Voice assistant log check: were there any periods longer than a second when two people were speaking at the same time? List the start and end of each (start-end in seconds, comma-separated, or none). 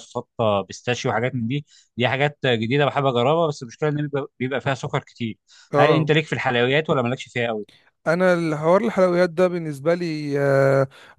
none